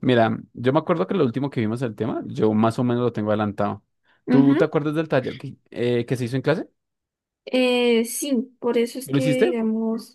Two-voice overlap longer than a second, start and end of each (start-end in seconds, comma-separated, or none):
none